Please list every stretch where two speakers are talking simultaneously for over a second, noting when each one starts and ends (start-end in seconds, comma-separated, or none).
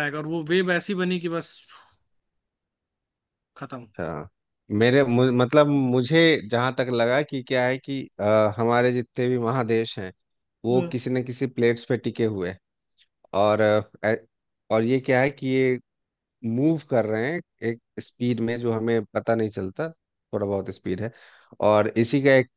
none